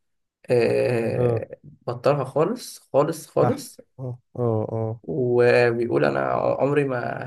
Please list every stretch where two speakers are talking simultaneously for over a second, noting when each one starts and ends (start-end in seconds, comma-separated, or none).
none